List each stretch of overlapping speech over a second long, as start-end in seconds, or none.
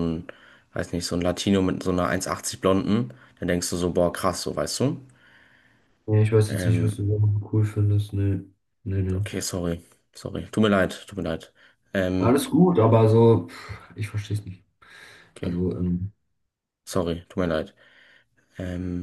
none